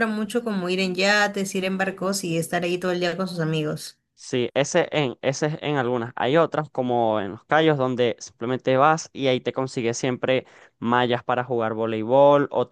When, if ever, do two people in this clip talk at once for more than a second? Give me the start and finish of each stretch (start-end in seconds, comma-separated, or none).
none